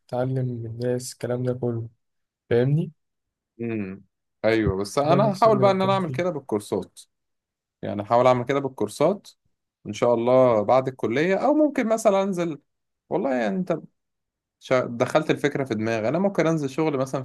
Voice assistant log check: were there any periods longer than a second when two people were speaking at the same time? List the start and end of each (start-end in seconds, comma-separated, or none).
5.0-6.3